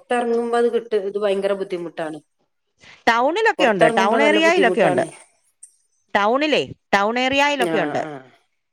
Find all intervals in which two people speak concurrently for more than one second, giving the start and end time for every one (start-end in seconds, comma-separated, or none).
3.6-5.0